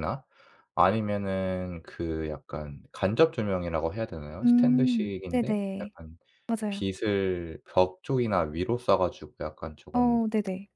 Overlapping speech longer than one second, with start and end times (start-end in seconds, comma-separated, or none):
4.4-5.9